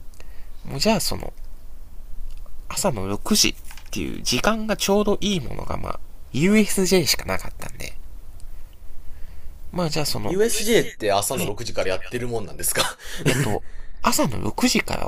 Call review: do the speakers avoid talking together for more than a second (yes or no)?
yes